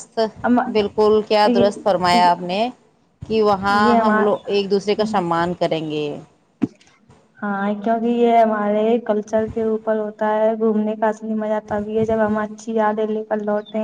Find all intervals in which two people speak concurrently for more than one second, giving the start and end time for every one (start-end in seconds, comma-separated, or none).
3.7-5.1